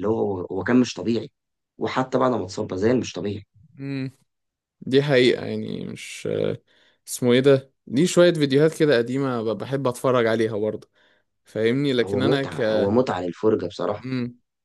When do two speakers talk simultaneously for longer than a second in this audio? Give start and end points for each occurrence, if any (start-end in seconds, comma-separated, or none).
none